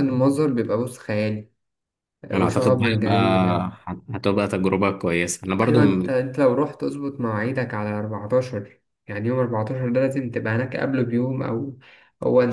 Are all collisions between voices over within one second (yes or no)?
no